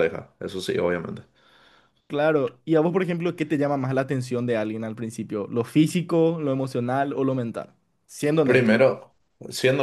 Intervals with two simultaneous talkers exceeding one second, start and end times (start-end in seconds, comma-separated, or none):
none